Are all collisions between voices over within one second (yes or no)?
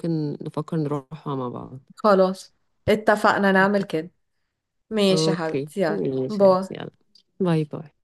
no